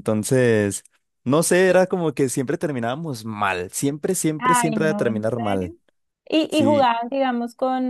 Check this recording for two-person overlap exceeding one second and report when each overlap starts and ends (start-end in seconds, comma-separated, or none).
4.4-5.7